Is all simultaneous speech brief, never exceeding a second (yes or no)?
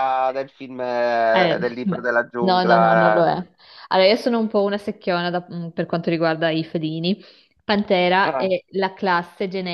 no